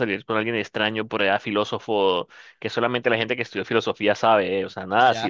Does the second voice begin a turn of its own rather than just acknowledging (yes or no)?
yes